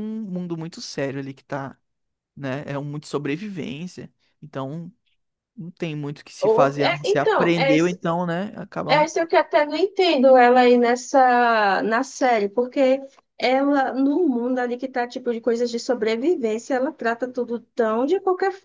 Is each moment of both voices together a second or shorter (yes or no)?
no